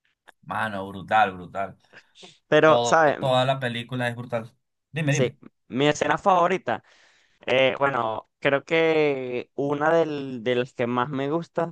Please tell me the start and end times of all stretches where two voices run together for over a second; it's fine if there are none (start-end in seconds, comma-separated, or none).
none